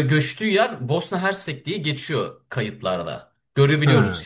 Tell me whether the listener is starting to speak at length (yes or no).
no